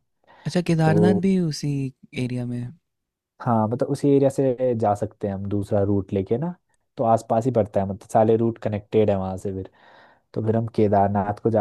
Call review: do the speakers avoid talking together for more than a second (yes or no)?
yes